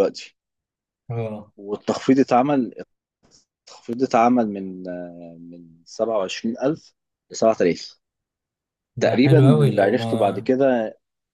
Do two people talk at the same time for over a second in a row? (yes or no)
yes